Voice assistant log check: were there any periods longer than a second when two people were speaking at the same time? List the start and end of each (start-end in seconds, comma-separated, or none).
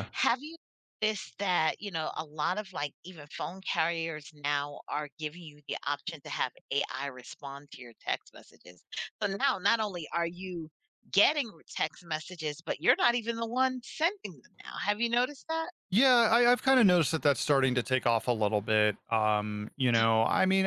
none